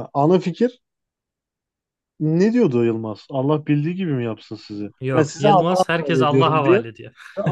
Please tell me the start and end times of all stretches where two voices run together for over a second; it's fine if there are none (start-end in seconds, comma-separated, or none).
5.0-6.8